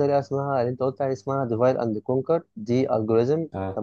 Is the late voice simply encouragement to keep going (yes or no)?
yes